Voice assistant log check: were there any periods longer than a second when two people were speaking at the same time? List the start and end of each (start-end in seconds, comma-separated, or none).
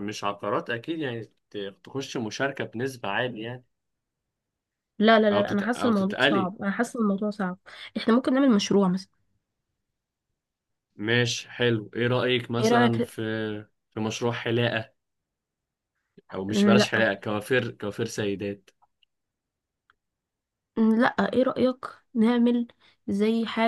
5.3-6.5